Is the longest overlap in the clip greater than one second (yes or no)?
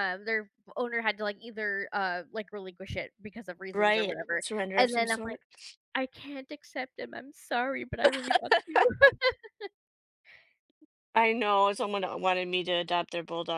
yes